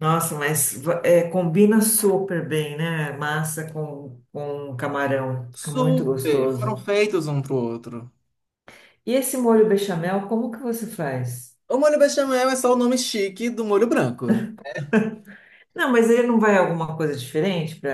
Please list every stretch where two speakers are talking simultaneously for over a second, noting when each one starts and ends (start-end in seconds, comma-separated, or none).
5.5-6.8